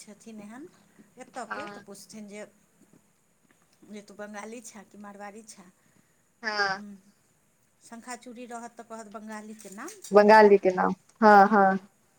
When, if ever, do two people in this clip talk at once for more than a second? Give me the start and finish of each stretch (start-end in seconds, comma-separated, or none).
none